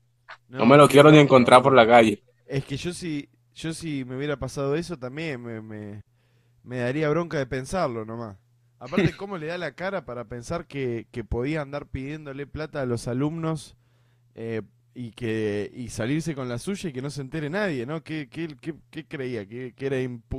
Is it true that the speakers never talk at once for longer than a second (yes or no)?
no